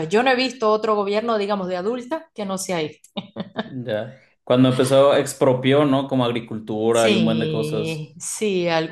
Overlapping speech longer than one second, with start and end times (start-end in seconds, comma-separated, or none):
7.0-8.2